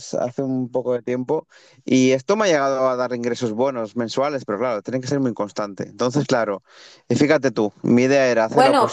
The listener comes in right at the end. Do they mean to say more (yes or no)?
yes